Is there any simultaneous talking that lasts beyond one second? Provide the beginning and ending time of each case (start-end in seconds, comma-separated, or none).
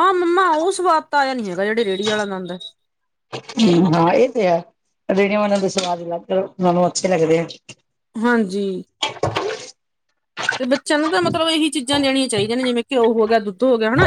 none